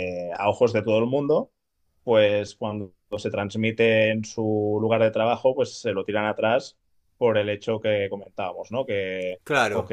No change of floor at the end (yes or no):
yes